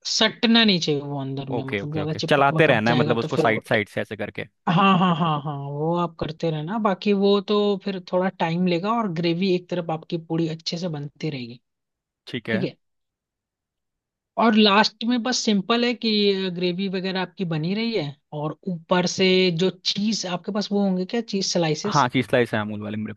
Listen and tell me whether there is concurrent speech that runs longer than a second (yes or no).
yes